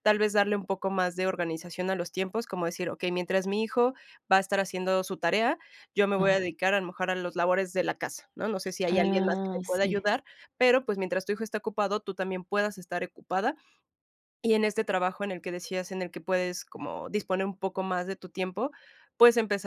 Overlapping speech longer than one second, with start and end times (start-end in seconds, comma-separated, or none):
8.9-10.1